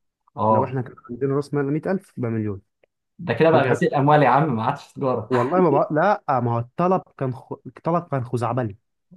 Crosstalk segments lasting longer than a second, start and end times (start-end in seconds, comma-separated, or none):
none